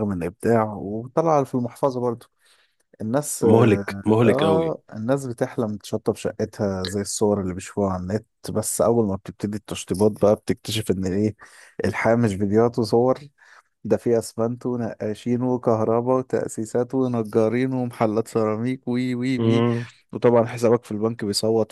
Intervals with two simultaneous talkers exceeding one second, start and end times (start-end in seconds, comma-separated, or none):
3.4-4.7